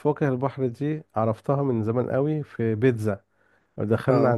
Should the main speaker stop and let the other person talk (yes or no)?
no